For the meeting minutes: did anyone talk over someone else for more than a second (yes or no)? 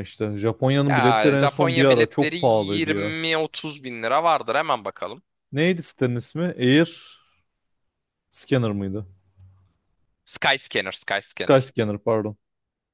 yes